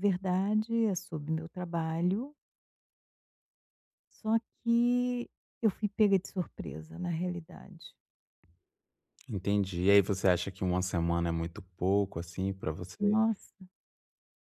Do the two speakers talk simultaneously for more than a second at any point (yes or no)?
no